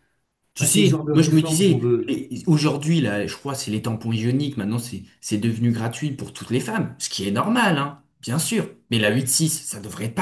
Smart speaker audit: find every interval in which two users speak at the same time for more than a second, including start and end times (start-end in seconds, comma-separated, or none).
0.6-2.2